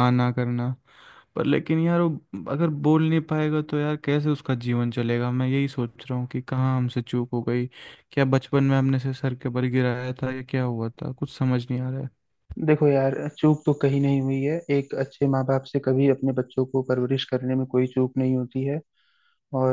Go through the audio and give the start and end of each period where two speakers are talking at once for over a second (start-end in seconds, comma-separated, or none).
none